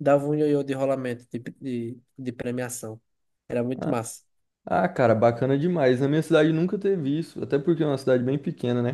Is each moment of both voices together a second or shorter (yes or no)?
yes